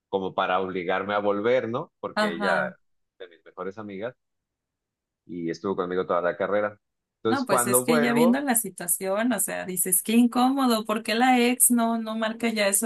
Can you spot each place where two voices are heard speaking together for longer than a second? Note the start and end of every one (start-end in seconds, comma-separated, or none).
7.2-8.4